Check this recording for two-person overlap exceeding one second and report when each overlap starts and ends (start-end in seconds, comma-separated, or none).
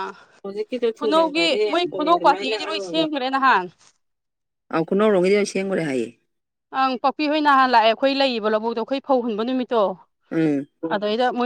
1.0-3.0